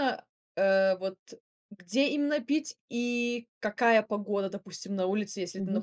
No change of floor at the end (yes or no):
yes